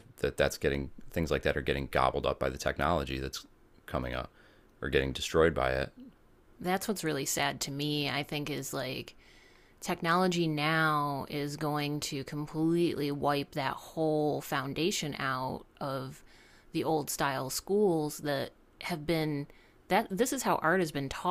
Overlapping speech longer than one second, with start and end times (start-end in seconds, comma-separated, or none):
none